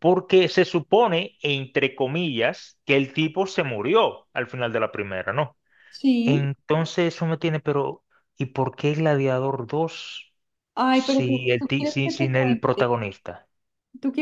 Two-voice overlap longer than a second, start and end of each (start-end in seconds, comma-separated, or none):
10.9-12.9